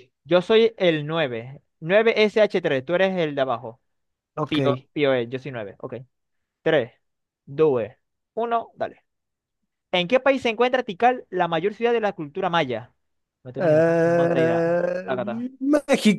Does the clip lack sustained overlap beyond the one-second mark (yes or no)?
no